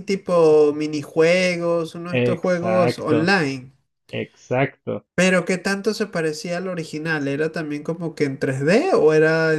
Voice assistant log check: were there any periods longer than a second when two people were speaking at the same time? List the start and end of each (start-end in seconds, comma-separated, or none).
2.1-3.3